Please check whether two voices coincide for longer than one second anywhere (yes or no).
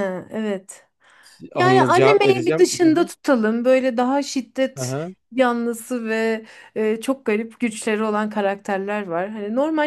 yes